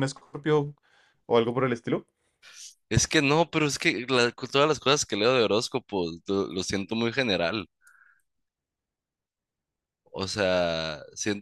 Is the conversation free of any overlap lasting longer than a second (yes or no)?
yes